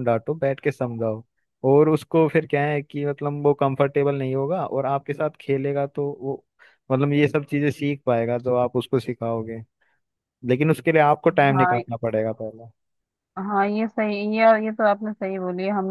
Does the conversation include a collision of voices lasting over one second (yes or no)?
no